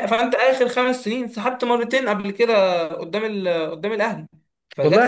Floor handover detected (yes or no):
yes